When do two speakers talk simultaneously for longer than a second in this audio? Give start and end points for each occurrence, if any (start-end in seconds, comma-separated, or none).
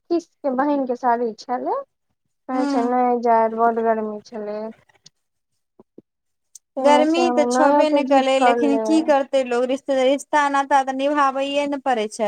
6.8-8.8